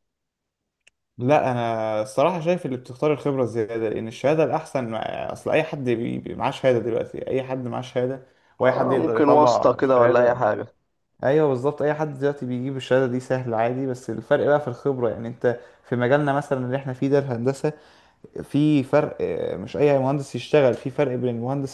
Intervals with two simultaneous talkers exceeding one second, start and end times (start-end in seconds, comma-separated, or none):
8.6-10.4